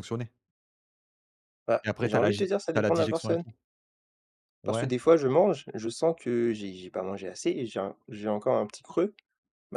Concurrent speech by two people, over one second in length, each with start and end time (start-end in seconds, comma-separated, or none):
1.8-3.4